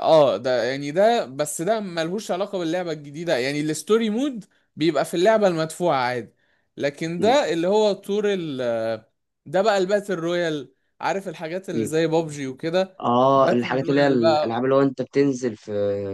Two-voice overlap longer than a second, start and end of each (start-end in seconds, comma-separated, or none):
13.0-14.6